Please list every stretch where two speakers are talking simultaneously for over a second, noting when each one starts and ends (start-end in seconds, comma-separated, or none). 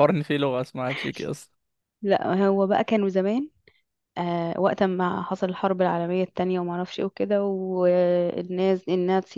none